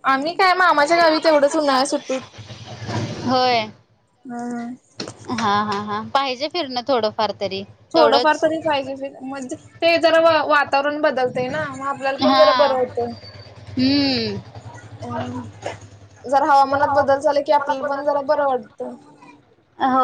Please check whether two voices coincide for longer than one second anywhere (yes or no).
no